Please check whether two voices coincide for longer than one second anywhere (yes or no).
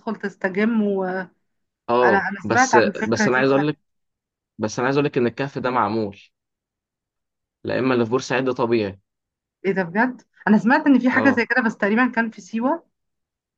yes